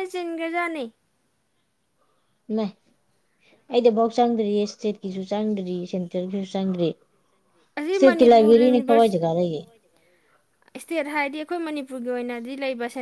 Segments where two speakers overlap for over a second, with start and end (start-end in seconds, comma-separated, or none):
7.8-9.1